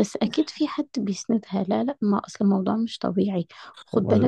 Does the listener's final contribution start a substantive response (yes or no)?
no